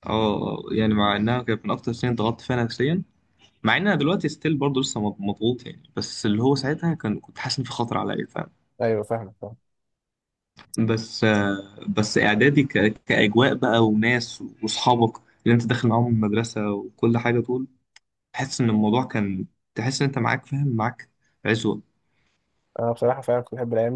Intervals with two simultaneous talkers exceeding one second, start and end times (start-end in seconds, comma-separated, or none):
none